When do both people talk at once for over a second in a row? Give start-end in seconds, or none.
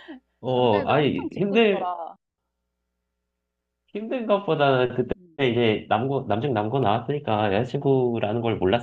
0.5-1.9